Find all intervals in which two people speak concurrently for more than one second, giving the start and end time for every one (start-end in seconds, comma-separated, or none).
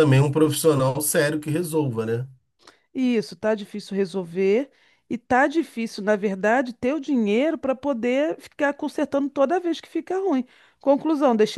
none